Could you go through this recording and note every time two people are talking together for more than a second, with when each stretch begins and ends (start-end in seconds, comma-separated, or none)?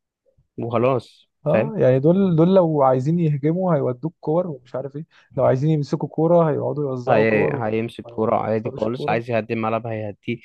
7.1-9.2